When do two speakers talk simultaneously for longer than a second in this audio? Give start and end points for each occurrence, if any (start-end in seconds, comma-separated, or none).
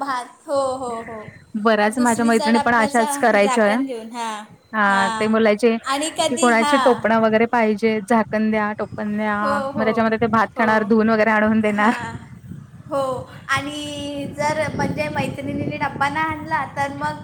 2.0-3.8